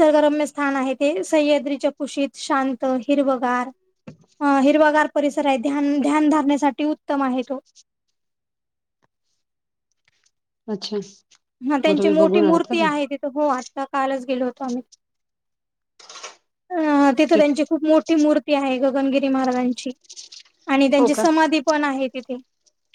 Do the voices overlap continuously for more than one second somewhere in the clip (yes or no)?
yes